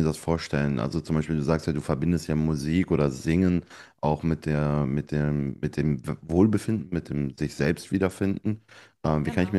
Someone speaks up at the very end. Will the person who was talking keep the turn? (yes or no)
yes